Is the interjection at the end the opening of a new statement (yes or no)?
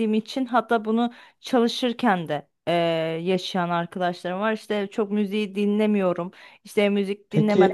yes